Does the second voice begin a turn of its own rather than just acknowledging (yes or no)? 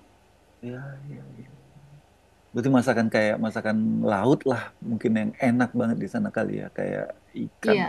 yes